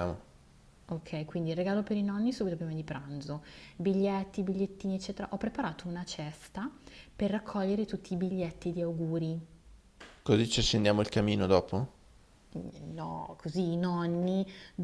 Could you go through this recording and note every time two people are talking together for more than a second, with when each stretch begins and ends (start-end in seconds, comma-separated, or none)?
none